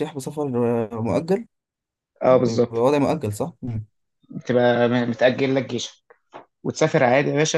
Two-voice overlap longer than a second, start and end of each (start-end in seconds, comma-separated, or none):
none